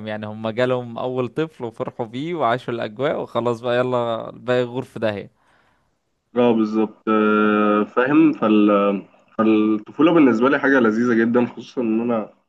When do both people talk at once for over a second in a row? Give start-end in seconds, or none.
none